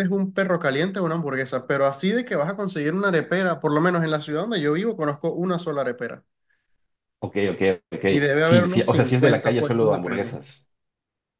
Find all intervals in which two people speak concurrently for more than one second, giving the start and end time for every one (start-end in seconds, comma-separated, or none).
8.4-10.3